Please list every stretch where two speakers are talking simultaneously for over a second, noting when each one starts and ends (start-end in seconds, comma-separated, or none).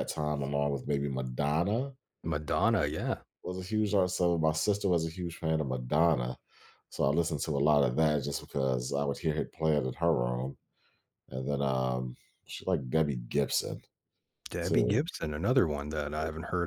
none